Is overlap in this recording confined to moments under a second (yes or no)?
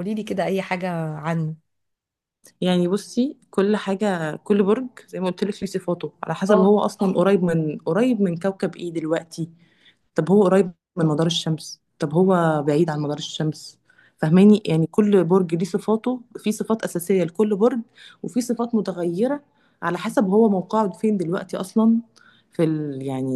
yes